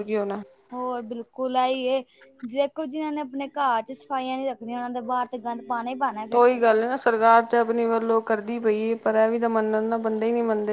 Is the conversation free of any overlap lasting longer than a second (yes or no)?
yes